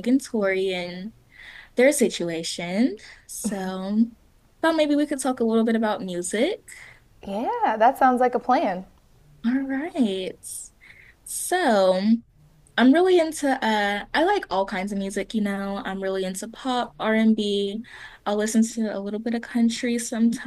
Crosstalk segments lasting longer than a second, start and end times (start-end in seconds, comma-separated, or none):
none